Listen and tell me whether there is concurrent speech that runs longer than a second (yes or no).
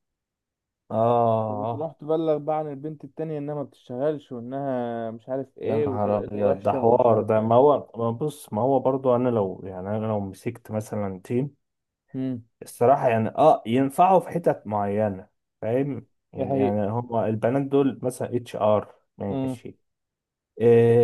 yes